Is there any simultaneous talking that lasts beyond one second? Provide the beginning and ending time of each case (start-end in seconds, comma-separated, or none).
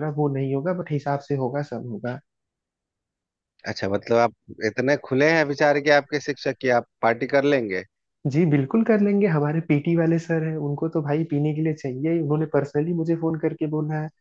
none